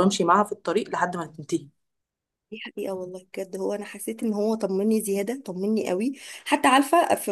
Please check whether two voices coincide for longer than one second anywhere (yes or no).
no